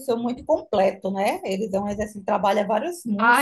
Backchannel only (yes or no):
no